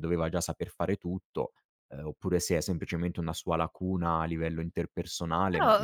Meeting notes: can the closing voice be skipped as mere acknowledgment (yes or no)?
no